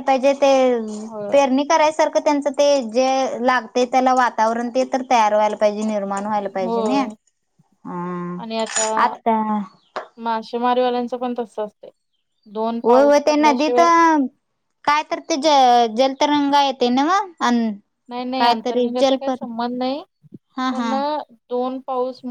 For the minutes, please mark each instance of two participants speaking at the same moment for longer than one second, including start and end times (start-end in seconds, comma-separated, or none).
none